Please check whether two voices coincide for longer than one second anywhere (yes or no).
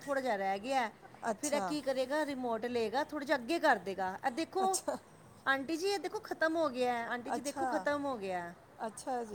no